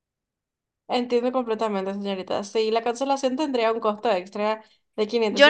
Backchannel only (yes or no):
no